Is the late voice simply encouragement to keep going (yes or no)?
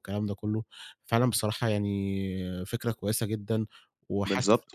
no